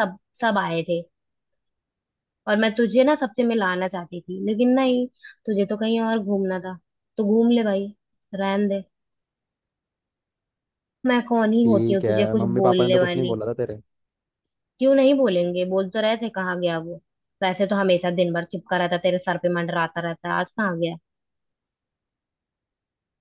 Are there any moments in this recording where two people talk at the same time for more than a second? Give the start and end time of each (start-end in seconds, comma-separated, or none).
11.6-13.4